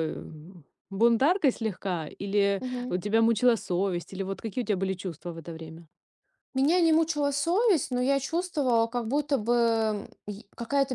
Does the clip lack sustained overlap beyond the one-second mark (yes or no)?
yes